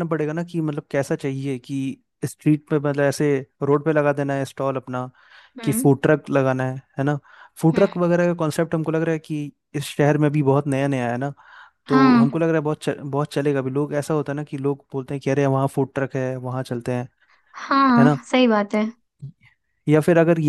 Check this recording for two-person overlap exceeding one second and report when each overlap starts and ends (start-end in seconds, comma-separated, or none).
none